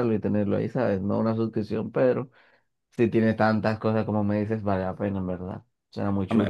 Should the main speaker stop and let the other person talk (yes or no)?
yes